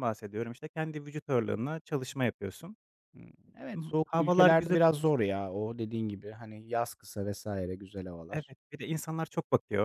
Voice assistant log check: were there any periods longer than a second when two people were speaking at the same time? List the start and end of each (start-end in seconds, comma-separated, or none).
3.8-5.2